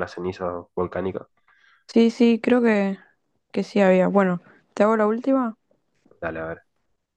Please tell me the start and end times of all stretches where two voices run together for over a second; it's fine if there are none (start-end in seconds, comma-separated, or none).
none